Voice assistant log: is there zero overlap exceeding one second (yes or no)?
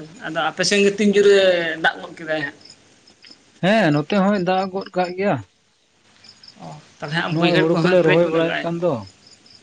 no